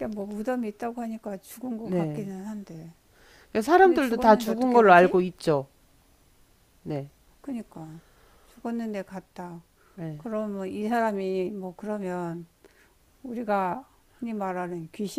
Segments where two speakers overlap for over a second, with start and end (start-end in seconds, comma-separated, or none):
3.8-5.1